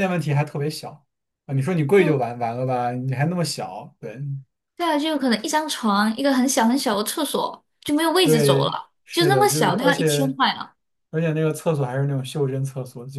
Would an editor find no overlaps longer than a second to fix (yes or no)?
no